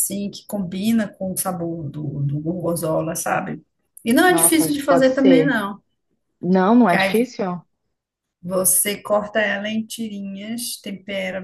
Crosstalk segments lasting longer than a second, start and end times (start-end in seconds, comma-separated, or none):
4.3-5.6